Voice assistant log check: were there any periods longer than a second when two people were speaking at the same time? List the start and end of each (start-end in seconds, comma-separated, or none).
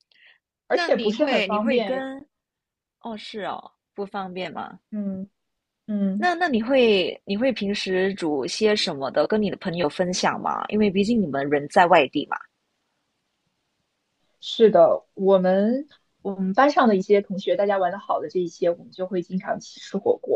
0.7-2.1